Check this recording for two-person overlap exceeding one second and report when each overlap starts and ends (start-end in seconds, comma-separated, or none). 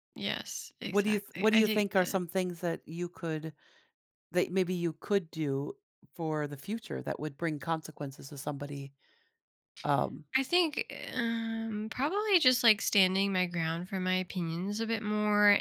0.8-2.2